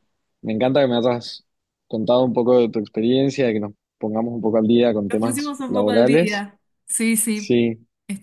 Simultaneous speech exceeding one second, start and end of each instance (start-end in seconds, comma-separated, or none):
5.1-6.5